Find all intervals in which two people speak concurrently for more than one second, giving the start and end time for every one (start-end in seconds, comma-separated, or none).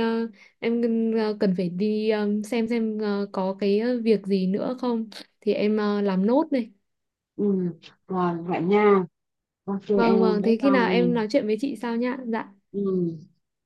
9.9-11.2